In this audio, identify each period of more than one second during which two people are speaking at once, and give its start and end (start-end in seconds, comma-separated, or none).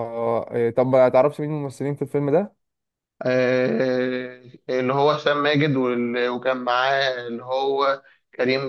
none